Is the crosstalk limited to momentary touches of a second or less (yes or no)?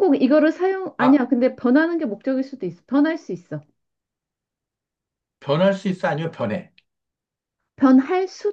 yes